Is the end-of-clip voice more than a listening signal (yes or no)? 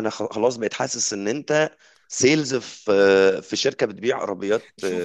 no